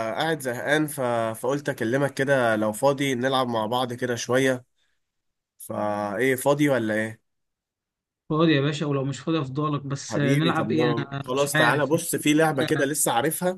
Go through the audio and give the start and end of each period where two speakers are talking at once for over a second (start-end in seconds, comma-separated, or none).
10.1-11.9